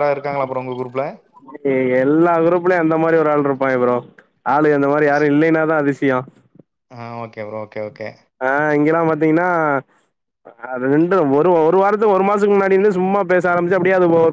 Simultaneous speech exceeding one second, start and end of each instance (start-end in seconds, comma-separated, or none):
none